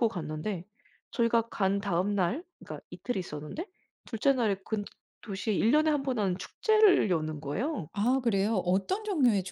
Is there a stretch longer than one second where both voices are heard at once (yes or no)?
no